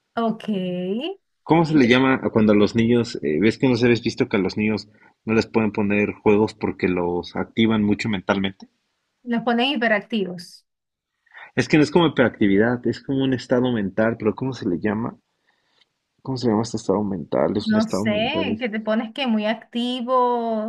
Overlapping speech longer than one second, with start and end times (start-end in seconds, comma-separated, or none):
17.6-18.9